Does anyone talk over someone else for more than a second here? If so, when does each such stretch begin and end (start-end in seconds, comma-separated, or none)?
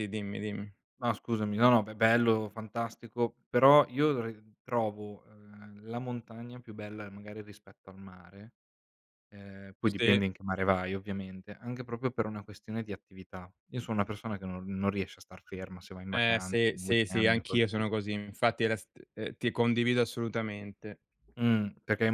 16.1-17.9